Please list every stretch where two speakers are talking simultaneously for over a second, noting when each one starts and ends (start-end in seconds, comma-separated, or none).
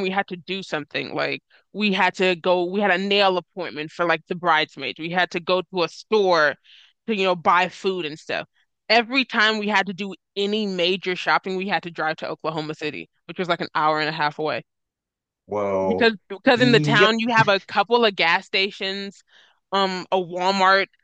15.8-17.2